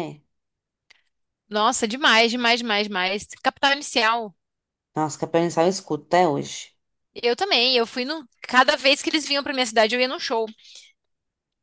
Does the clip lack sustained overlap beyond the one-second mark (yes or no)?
yes